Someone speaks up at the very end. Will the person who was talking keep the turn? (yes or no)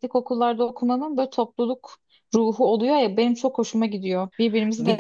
no